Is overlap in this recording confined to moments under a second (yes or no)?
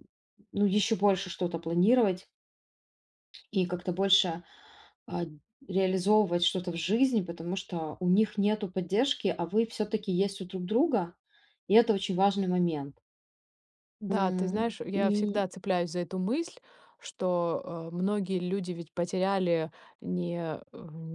no